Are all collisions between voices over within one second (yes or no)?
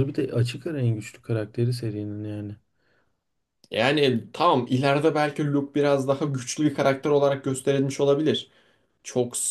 yes